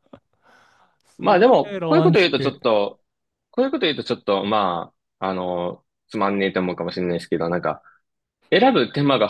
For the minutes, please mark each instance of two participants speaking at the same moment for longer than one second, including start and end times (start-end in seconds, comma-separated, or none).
1.2-2.6